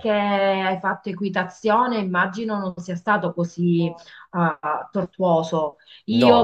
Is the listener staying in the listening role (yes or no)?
yes